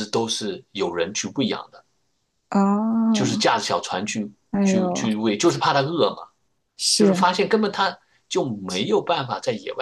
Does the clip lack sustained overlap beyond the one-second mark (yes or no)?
yes